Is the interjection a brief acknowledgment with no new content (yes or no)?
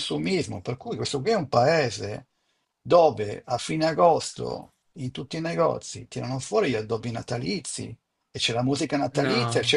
yes